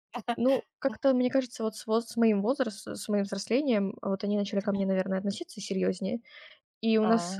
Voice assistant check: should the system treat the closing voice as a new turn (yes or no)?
no